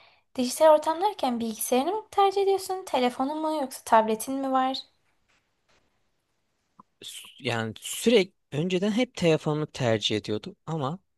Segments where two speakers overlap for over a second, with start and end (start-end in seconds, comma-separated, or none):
none